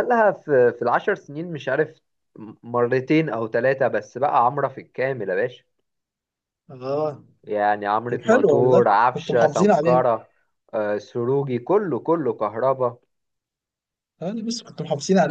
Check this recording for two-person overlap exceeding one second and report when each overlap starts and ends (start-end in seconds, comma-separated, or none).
8.1-10.0